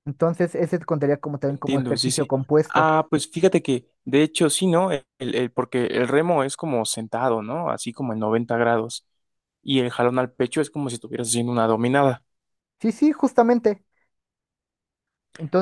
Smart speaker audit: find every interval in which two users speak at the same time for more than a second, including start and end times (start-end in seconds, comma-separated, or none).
1.5-2.9